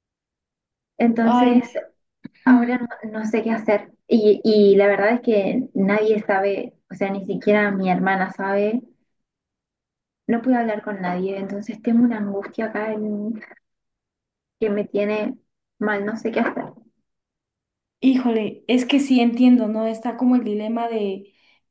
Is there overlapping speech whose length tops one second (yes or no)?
no